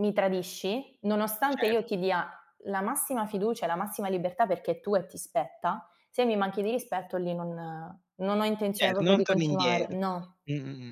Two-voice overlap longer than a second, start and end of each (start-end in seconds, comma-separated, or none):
8.8-10.0